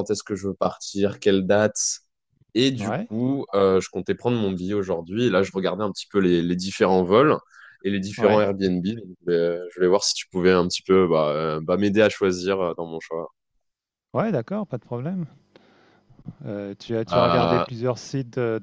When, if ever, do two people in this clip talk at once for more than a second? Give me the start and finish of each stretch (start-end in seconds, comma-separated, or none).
none